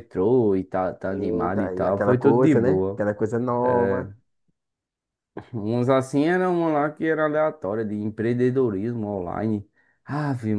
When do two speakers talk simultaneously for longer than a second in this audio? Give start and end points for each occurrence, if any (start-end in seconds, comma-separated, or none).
1.1-3.0